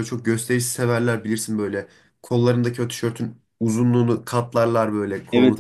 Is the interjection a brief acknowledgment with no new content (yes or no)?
no